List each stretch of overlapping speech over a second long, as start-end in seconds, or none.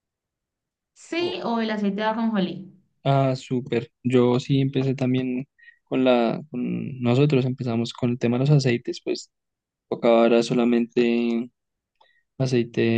none